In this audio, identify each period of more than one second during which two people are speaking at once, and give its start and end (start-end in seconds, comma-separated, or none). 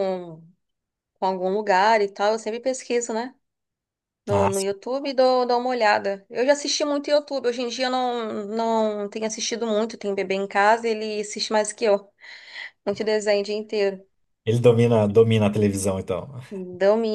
none